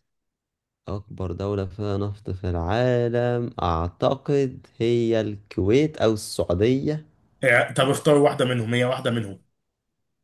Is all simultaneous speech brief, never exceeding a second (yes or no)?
yes